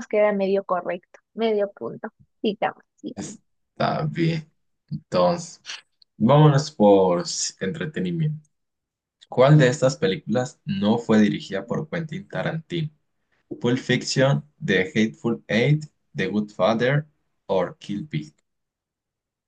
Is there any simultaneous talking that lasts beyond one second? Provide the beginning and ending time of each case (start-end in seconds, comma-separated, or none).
none